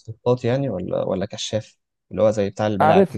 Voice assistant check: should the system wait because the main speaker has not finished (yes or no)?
no